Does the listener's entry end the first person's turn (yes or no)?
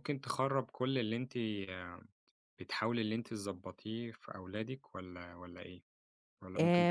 yes